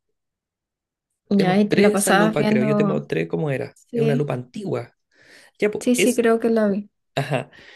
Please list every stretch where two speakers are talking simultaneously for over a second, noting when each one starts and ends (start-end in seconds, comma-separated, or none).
1.4-3.0